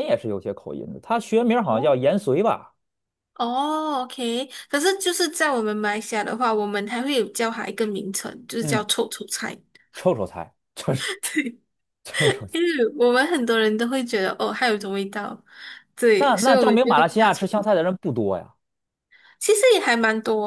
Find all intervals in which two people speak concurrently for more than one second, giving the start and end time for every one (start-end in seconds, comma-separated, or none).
16.2-17.7